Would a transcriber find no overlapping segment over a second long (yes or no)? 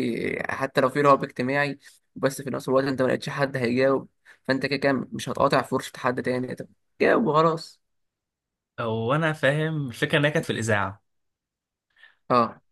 yes